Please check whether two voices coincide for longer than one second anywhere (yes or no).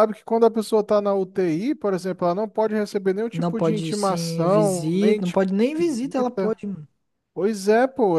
yes